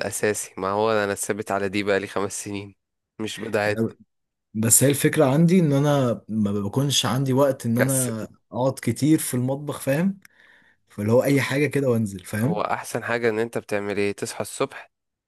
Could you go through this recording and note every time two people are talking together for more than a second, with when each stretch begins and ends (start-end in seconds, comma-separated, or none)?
none